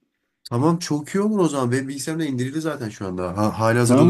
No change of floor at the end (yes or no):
no